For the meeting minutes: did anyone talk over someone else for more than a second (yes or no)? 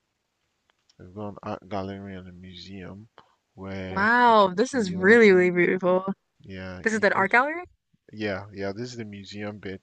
yes